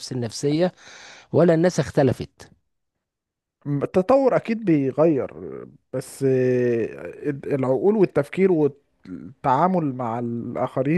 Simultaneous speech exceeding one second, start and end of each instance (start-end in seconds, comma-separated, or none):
none